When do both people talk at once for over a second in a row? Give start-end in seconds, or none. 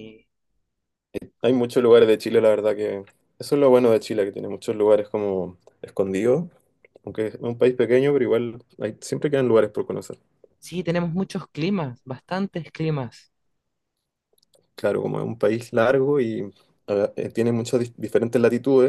none